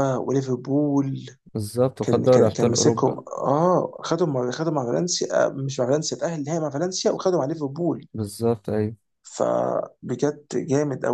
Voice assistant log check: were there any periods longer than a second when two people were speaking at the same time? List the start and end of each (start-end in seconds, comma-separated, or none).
2.0-3.2